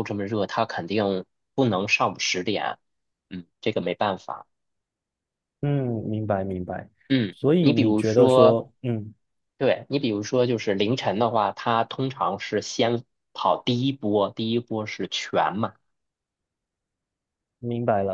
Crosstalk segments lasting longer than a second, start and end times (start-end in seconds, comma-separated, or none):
7.3-8.6